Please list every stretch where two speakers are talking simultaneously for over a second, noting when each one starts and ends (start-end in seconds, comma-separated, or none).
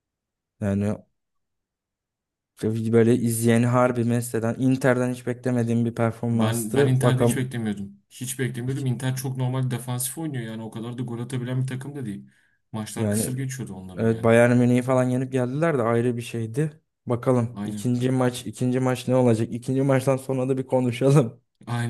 6.3-7.5